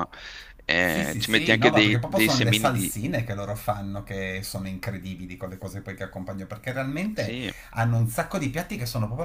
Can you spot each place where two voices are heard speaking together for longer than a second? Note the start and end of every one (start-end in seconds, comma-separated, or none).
0.8-3.0